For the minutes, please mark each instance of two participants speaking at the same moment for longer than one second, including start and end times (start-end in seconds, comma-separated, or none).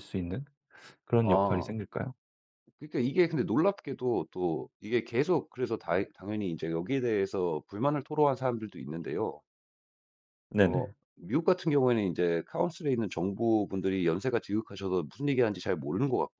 none